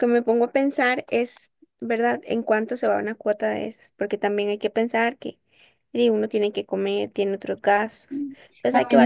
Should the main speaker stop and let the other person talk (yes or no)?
yes